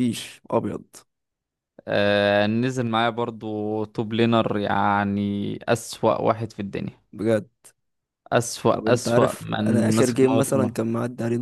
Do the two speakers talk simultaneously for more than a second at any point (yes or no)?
yes